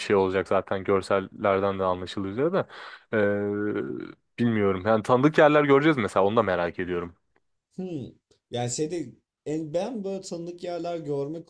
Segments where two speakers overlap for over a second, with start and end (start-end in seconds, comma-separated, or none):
none